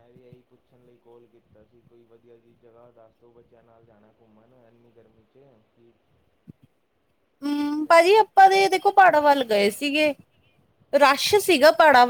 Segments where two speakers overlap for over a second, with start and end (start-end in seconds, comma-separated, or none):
none